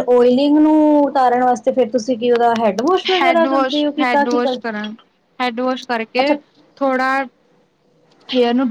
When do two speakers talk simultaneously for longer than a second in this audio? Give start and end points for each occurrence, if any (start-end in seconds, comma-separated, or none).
3.1-4.9